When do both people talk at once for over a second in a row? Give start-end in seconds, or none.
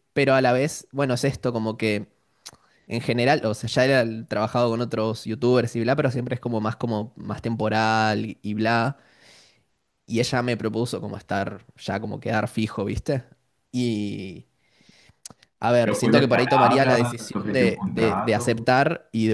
15.8-18.7